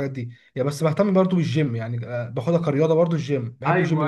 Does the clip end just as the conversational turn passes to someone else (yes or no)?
yes